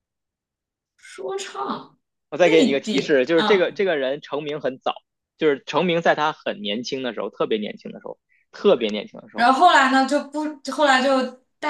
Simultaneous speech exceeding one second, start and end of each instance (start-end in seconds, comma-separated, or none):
2.4-3.7